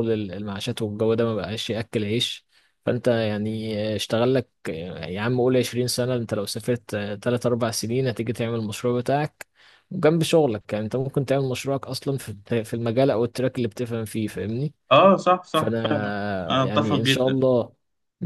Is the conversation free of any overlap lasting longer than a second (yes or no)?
no